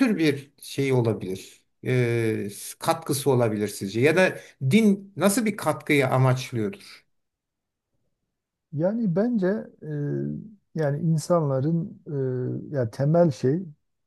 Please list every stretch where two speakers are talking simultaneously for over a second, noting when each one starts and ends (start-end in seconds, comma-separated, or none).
none